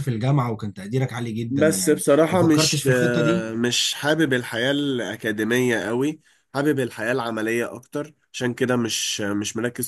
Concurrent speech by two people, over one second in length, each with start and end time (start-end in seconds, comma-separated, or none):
1.5-3.5